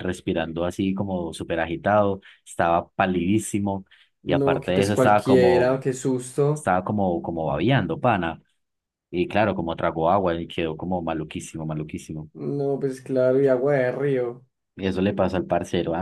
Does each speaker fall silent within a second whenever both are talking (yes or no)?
no